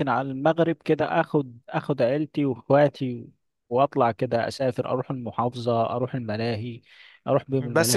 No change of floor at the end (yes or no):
no